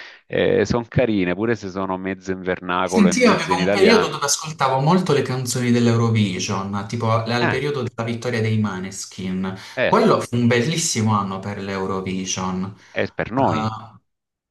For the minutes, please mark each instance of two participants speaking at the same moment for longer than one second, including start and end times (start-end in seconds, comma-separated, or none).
2.9-4.3